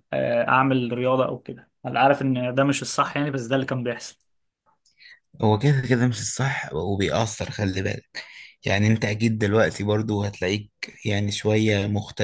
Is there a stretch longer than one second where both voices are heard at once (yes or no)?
no